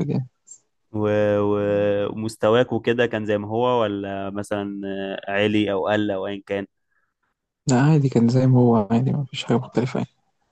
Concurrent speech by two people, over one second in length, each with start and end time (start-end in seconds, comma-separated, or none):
none